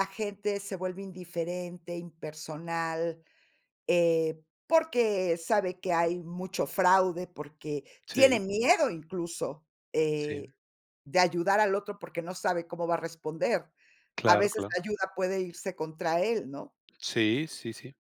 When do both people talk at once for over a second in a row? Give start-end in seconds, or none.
none